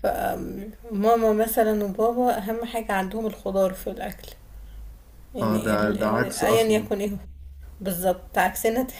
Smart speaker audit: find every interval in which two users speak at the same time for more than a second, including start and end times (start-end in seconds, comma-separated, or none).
5.4-6.9